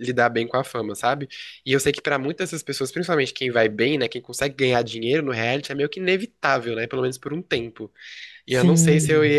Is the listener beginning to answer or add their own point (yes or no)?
no